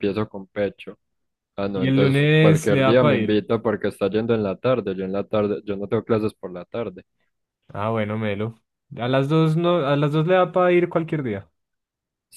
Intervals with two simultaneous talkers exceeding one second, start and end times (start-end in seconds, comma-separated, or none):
1.7-3.4